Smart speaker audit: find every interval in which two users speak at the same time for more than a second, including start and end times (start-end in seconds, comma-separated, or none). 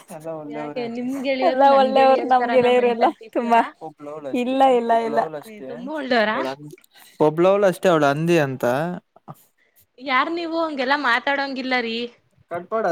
1.5-3.6